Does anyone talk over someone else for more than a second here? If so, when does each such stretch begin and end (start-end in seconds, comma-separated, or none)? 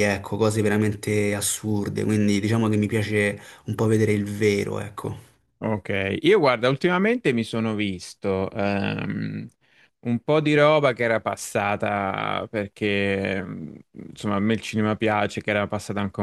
none